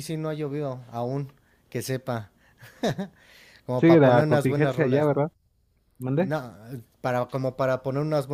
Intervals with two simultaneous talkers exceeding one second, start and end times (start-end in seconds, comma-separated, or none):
3.8-5.2